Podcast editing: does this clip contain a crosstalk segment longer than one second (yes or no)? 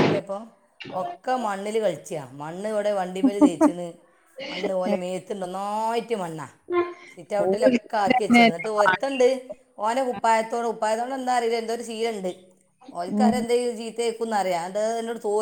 yes